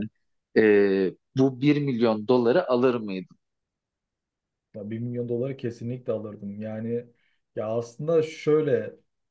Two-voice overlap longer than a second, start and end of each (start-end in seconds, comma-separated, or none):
none